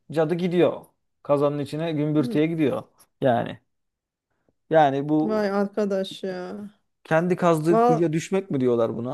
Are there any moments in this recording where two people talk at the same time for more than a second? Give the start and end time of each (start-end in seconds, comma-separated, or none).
none